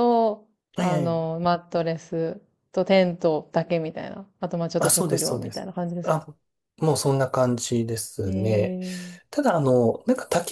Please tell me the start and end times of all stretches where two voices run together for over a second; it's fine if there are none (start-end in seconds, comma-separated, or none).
4.8-6.2